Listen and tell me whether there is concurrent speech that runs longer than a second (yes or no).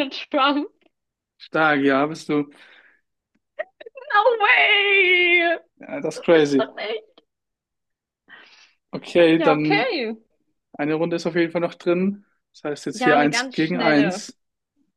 yes